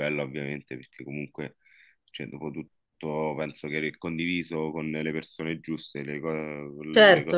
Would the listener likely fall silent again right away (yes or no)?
no